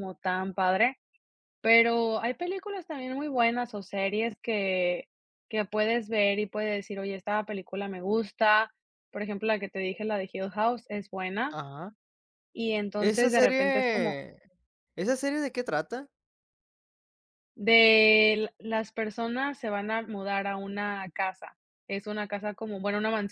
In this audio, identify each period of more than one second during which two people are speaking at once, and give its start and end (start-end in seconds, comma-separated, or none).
13.0-14.2